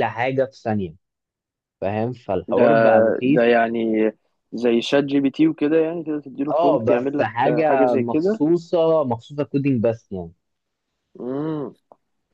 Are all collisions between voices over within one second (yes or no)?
no